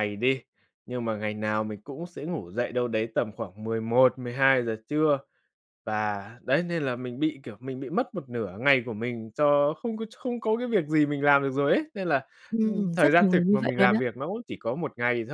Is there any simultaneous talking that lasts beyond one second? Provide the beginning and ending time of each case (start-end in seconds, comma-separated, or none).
12.5-14.0